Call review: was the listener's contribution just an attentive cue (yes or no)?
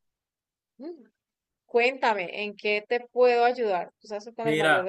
no